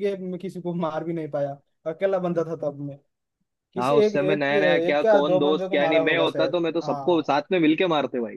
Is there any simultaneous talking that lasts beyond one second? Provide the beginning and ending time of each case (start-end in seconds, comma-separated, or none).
3.8-7.3